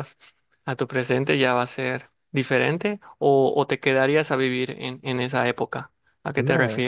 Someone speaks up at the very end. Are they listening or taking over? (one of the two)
taking over